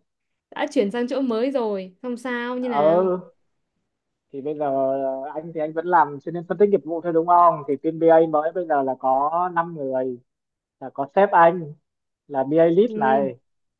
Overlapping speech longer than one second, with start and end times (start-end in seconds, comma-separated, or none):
none